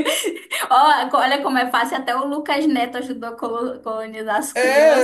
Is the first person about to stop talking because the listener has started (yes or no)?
yes